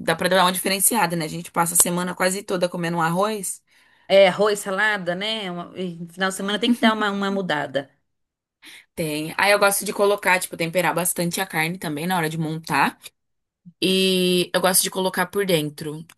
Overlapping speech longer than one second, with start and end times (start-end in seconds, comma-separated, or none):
none